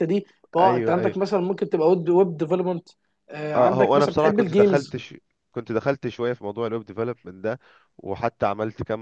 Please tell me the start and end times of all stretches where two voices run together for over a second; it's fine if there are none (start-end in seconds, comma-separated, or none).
3.5-5.0